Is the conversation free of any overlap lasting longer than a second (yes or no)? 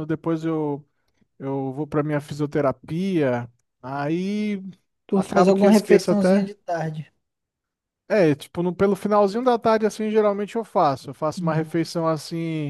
no